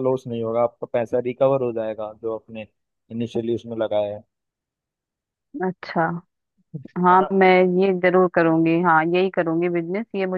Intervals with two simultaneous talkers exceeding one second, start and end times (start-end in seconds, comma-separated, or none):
none